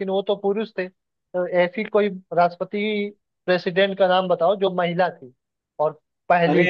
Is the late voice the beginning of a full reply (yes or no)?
yes